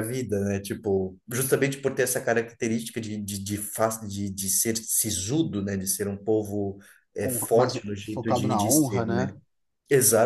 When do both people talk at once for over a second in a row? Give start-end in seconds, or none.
7.2-9.3